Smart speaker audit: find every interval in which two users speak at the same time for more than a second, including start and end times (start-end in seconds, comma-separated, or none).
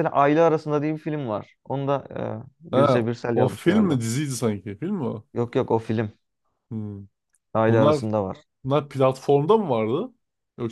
2.7-4.0